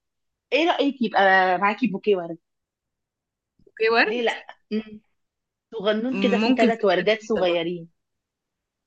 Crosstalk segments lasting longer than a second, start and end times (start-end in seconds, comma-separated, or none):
6.1-7.6